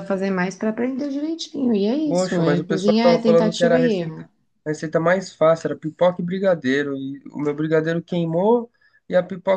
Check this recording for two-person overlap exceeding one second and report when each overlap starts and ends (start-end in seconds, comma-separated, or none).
2.0-4.3